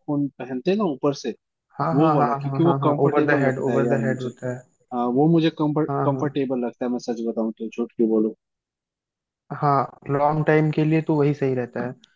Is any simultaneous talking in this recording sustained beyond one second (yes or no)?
yes